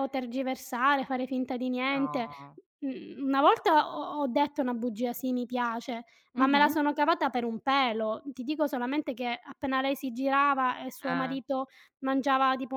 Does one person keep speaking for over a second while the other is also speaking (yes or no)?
no